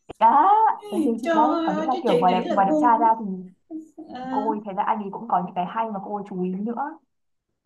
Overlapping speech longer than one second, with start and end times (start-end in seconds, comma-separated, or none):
1.2-3.1